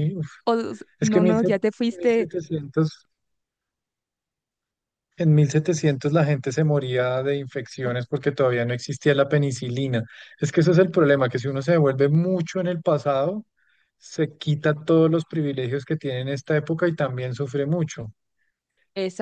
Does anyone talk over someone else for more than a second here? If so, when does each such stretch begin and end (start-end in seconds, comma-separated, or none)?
none